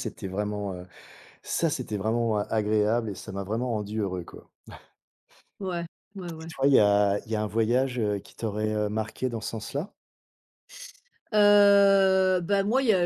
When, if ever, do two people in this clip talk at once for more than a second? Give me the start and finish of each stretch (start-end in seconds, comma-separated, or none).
none